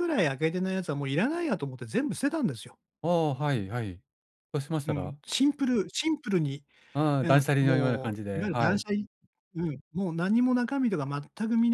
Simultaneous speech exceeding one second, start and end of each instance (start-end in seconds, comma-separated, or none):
7.2-8.8